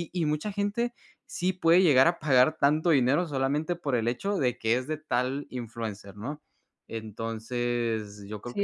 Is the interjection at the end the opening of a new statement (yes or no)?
yes